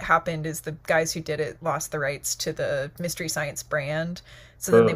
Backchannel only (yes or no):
yes